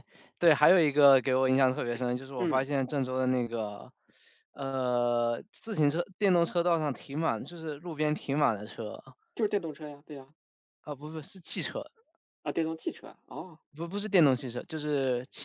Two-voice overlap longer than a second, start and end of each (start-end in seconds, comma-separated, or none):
none